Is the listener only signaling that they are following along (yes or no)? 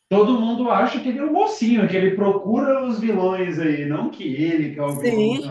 no